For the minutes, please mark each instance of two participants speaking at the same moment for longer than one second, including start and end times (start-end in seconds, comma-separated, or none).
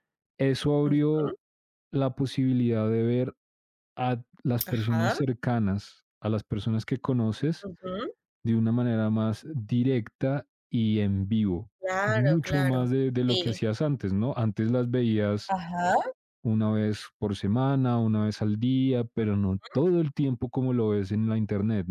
11.8-13.6